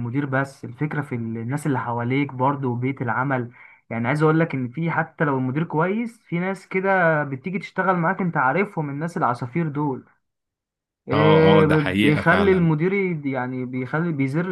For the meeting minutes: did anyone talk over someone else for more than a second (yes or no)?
yes